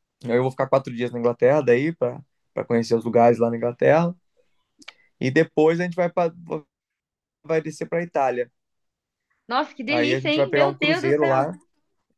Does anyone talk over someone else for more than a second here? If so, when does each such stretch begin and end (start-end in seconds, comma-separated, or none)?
9.9-11.4